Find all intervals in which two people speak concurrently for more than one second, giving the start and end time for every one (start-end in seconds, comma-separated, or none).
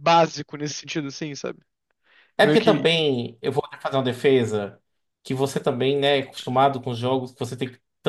none